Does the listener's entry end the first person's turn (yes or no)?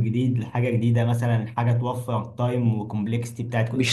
yes